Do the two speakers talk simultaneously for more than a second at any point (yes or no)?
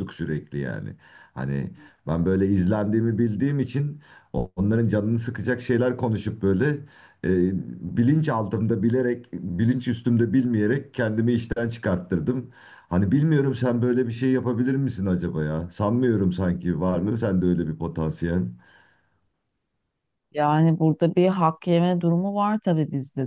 no